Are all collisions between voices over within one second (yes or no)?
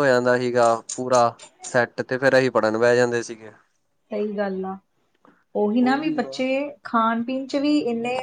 yes